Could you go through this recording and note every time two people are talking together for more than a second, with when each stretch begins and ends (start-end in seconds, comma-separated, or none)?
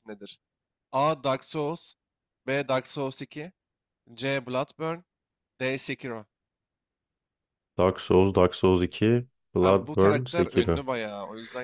9.6-10.8